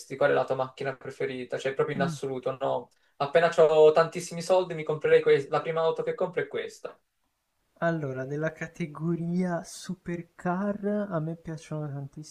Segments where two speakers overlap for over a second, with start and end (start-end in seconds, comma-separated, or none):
none